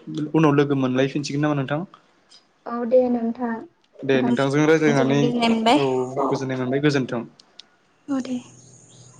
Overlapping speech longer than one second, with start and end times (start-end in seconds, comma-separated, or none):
4.1-5.8